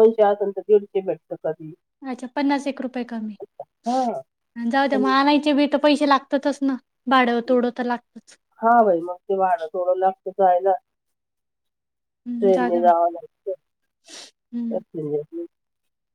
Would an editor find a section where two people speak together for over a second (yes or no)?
no